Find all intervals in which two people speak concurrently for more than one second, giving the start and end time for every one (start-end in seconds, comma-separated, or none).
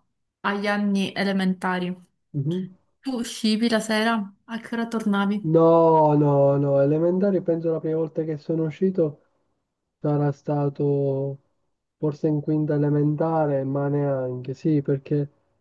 none